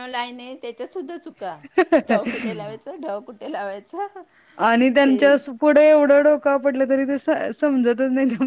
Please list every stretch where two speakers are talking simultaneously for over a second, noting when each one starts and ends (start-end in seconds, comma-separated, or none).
none